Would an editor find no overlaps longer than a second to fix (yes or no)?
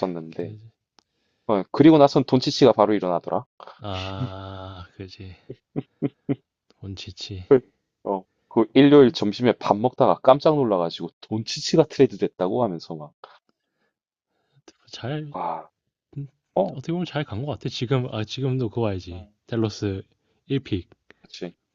yes